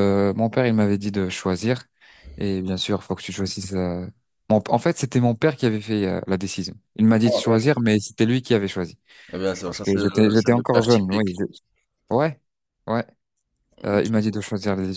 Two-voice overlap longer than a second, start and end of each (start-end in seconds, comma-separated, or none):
9.6-11.3